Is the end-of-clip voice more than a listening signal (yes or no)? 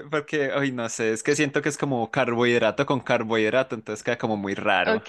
yes